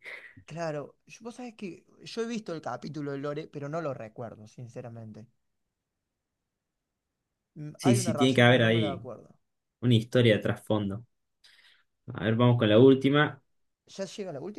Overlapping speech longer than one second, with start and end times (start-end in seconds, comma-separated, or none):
7.8-9.1